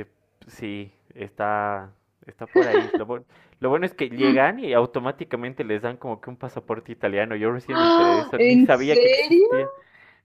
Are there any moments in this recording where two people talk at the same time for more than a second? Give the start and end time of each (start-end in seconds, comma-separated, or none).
7.7-9.5